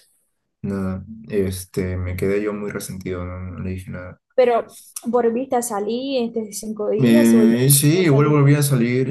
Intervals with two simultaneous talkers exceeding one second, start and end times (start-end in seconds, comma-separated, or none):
7.0-8.4